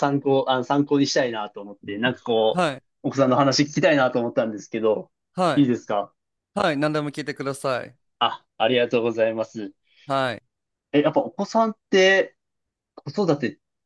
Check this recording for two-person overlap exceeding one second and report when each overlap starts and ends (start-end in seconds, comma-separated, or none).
none